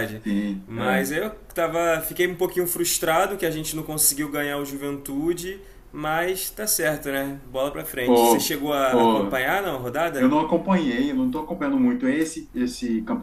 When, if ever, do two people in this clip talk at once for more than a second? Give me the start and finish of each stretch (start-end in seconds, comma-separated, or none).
8.0-9.4